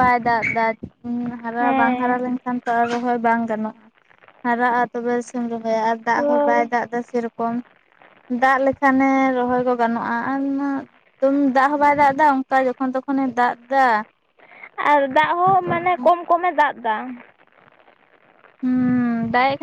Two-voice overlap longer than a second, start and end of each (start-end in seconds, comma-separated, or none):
none